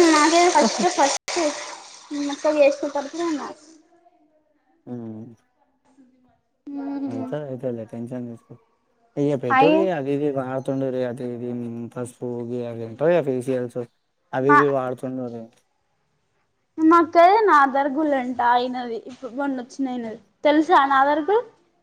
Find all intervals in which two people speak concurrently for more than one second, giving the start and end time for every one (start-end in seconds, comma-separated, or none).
none